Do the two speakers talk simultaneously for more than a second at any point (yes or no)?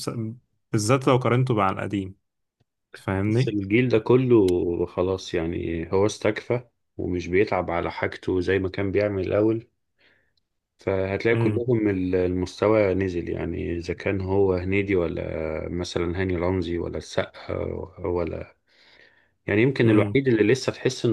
no